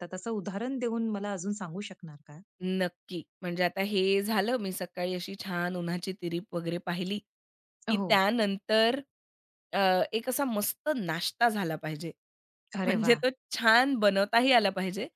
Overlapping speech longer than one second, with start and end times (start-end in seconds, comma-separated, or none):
none